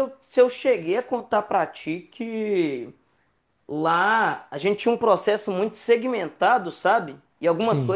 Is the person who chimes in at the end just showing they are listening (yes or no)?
yes